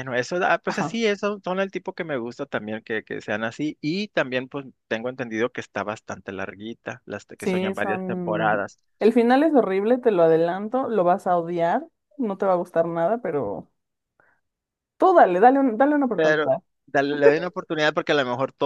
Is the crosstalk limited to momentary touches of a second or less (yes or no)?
no